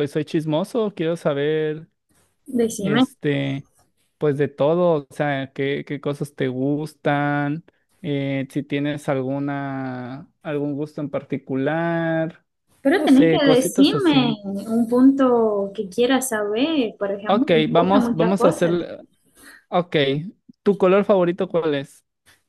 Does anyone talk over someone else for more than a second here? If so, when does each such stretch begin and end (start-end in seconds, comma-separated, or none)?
13.0-14.4, 17.3-18.7